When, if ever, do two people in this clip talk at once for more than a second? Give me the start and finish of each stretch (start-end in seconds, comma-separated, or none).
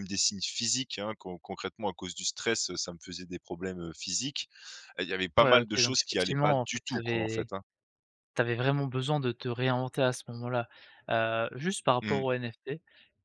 5.4-7.5